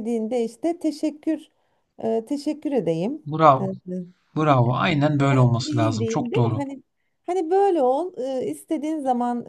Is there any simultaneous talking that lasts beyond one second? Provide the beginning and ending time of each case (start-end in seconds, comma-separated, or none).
5.2-6.6